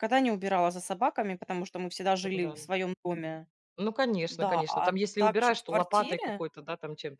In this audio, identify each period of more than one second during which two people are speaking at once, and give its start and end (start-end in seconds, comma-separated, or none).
4.3-6.4